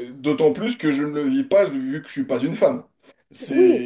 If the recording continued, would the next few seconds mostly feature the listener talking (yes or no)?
yes